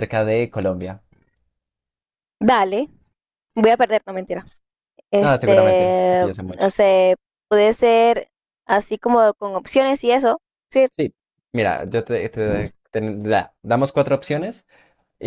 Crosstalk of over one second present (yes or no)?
yes